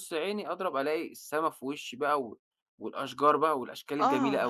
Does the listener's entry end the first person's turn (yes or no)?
yes